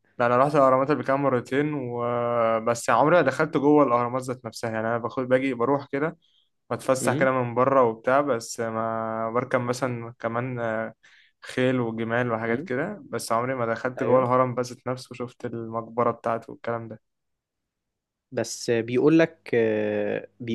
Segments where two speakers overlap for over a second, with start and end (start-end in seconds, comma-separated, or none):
none